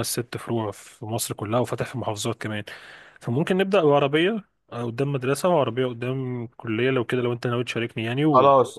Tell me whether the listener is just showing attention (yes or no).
no